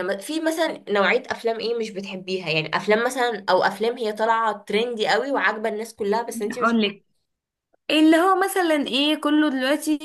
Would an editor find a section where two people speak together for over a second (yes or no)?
no